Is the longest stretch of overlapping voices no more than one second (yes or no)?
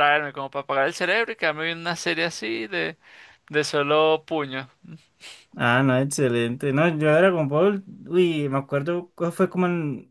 yes